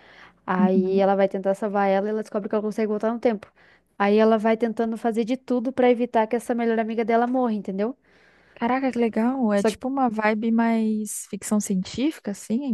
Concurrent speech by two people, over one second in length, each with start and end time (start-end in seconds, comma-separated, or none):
none